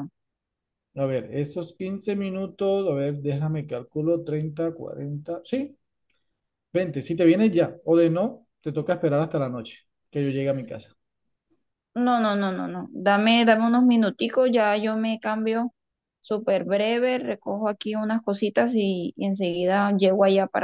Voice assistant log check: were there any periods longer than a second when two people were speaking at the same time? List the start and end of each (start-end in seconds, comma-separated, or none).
none